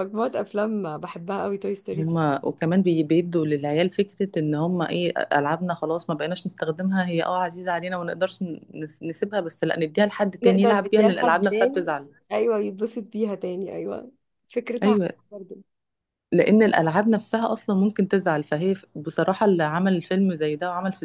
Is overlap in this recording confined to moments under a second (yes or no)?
no